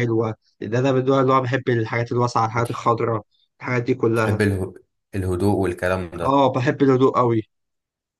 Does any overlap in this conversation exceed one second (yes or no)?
no